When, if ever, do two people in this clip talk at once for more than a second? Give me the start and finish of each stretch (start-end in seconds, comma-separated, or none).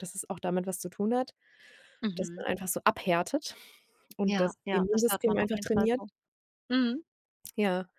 4.2-6.0